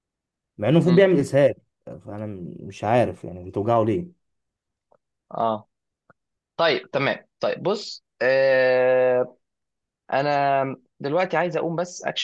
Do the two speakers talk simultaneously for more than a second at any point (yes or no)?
no